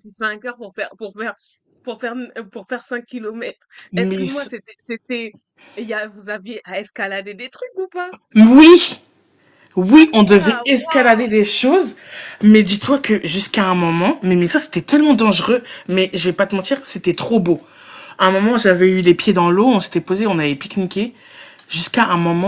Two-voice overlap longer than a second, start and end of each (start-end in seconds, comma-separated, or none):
9.9-11.2